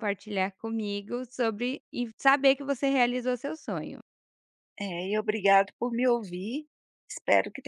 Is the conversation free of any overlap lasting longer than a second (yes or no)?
yes